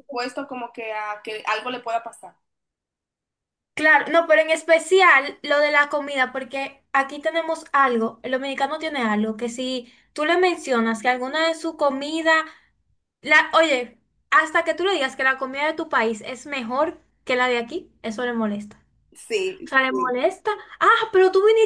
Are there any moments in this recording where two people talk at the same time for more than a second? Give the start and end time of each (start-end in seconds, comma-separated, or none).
none